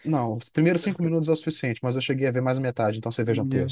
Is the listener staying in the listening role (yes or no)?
no